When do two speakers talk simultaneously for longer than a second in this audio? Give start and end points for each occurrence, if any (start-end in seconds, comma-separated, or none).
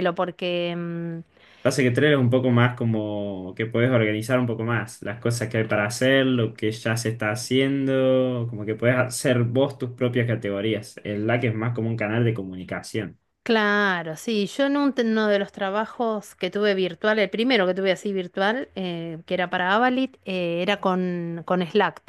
none